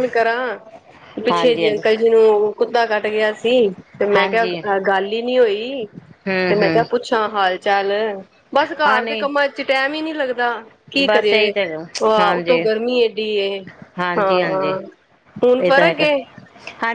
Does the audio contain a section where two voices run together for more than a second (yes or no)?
yes